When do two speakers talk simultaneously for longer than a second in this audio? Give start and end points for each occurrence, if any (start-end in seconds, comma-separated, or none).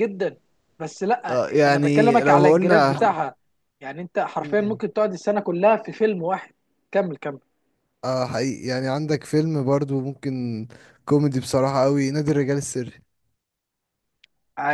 1.3-3.0